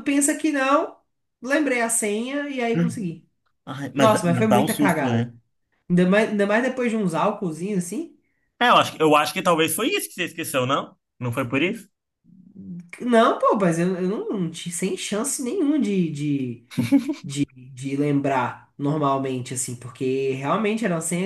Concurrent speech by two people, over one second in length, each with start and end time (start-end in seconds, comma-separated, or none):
4.0-5.3